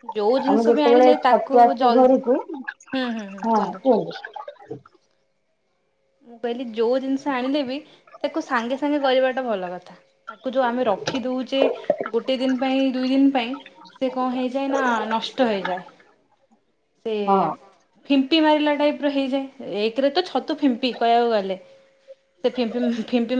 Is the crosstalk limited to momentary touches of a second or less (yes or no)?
no